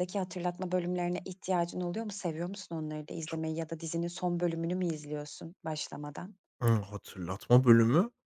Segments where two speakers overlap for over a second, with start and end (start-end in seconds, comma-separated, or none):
none